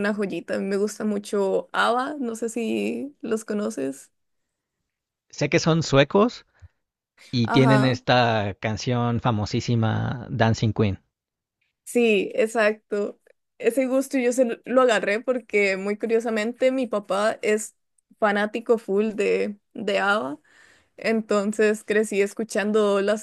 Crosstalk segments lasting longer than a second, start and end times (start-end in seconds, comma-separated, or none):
none